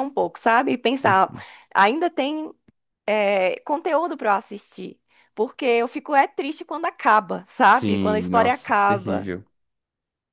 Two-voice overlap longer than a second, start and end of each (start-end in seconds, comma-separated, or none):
7.7-9.3